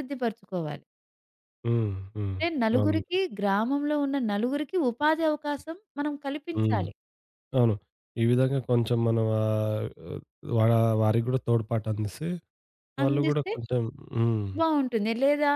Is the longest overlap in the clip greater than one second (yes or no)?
no